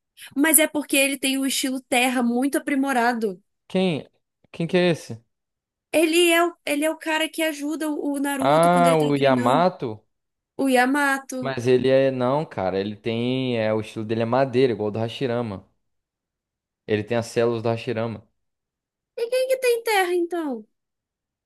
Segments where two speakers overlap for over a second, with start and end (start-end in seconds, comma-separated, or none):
8.4-9.7